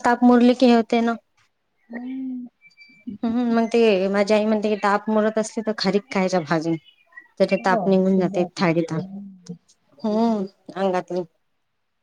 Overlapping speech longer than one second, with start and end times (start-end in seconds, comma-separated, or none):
7.6-9.3